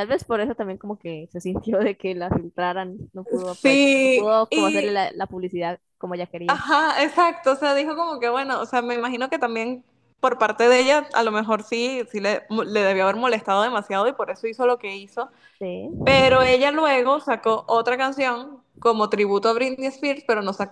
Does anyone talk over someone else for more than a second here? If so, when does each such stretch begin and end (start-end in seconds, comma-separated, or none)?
3.6-5.0